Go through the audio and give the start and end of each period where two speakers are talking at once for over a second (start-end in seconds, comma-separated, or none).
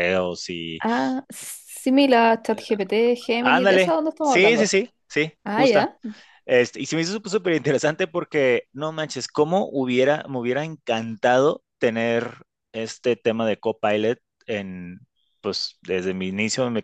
3.4-4.7